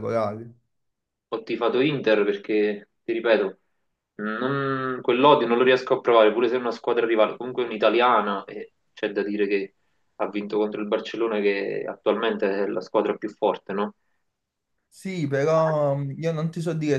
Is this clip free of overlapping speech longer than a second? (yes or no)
yes